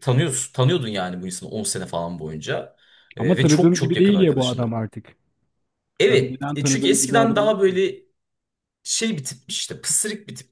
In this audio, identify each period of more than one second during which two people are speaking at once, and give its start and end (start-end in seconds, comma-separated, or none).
3.2-4.8, 6.1-7.4